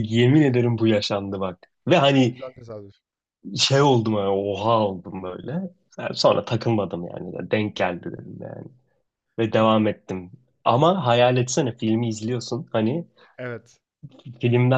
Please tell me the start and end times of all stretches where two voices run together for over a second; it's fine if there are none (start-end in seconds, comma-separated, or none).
none